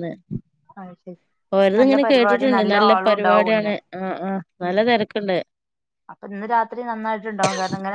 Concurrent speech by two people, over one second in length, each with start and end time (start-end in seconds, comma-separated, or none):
2.1-3.7